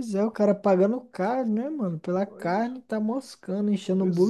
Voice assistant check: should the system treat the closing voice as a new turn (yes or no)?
yes